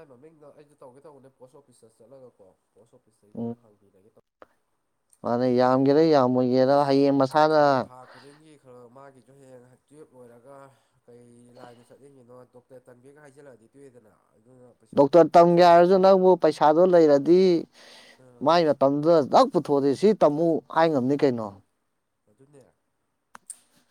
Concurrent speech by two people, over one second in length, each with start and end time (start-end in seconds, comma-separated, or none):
none